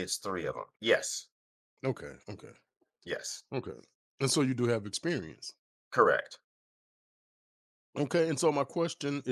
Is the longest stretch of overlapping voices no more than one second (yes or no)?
yes